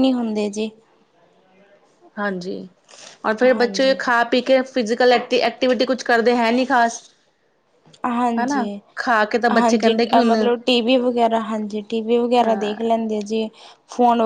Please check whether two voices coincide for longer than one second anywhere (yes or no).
no